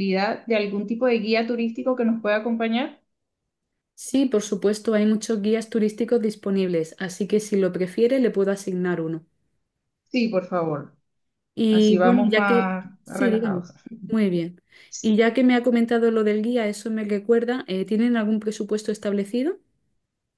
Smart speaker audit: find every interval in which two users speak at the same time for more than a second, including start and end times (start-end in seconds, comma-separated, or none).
11.7-13.7